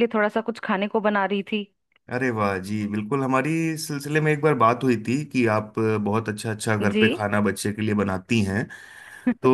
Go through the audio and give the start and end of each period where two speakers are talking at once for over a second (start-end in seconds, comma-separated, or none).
none